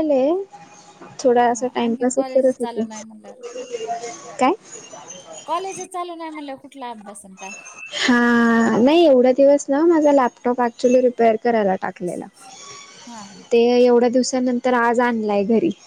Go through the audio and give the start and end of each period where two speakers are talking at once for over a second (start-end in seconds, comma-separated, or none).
1.5-2.9